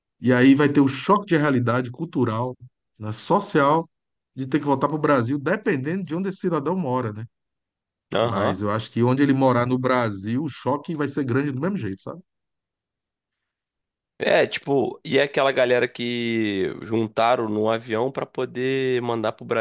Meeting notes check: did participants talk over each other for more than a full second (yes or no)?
no